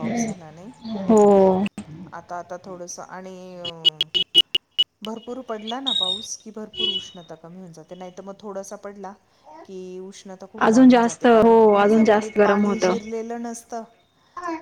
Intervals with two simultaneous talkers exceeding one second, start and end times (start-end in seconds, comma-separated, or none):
10.7-12.8